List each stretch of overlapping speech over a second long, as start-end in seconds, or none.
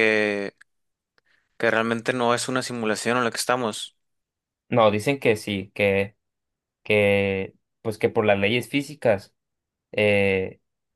none